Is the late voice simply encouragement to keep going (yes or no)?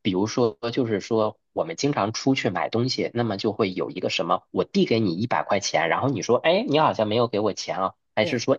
yes